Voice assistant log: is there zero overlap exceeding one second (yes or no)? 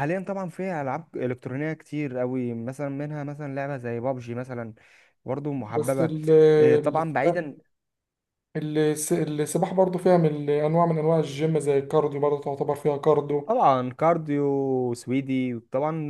yes